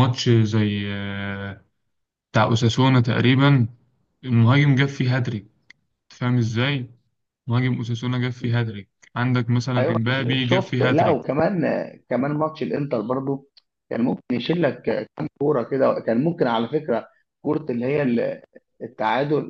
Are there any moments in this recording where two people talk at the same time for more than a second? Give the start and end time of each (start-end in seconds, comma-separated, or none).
9.8-11.2